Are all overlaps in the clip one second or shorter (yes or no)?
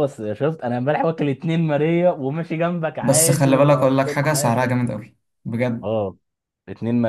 no